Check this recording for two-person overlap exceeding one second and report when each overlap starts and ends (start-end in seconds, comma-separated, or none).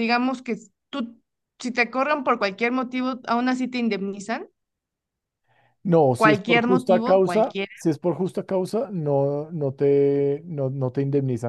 6.2-7.7